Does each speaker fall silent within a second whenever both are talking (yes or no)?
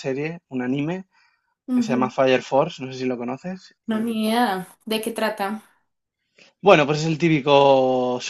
yes